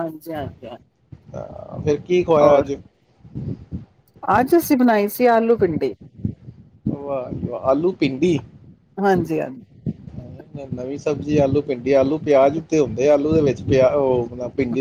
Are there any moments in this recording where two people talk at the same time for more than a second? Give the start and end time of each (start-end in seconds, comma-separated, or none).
none